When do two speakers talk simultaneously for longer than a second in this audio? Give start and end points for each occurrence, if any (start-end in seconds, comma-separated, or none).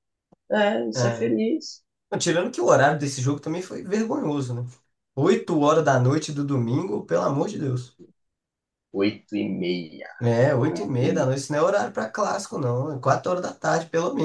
none